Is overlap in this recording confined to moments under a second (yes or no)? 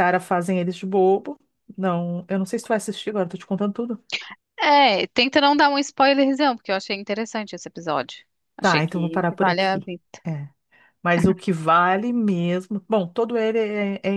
no